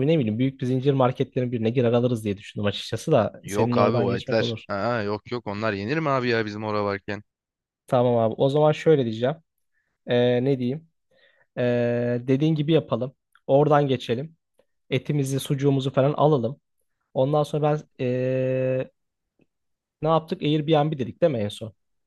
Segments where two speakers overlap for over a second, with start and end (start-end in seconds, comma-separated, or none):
3.4-4.7